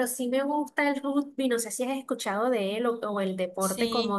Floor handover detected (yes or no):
no